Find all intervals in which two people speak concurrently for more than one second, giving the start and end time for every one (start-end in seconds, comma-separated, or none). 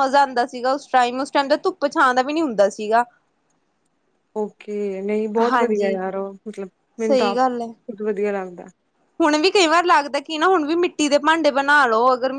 none